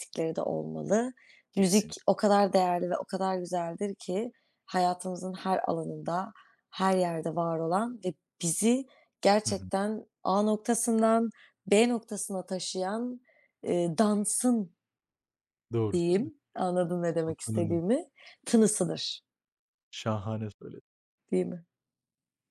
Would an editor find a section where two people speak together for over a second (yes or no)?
no